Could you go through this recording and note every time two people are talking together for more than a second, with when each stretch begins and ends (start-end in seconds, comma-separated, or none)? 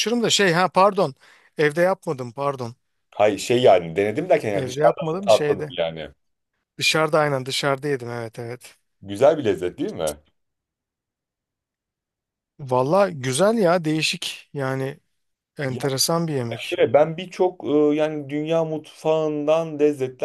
4.5-5.7